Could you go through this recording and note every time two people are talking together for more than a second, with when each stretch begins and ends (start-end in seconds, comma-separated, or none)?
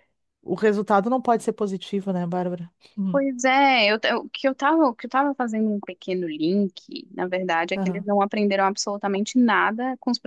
none